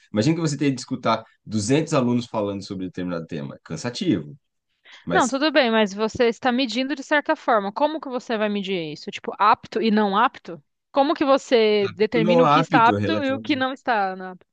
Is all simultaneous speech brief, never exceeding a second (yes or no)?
no